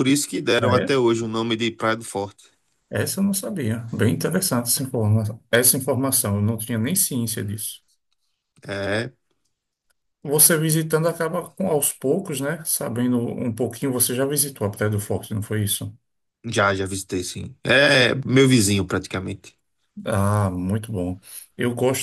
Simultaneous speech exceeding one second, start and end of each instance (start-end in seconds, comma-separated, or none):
none